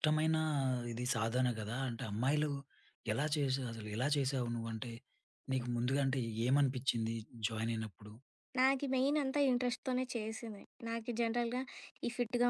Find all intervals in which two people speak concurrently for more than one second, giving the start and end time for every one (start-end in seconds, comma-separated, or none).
none